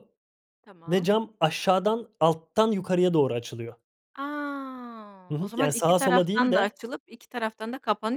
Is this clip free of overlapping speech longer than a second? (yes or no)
no